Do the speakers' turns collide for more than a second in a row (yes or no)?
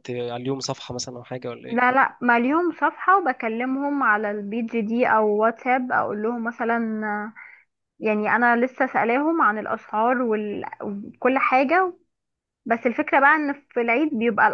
no